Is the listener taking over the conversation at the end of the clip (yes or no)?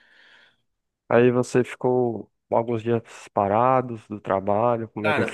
yes